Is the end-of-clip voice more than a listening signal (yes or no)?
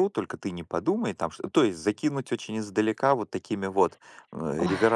no